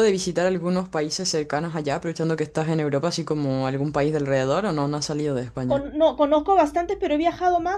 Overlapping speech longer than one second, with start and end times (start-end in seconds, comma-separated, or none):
none